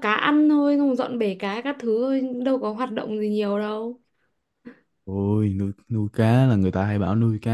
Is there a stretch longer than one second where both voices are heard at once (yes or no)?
no